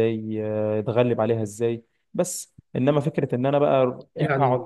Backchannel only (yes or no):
yes